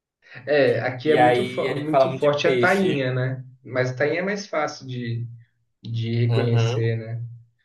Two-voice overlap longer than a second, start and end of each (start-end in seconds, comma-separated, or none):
1.0-3.1